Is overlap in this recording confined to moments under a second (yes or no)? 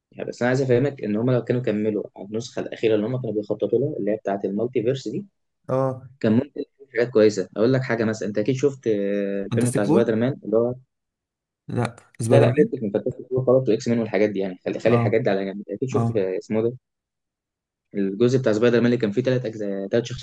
yes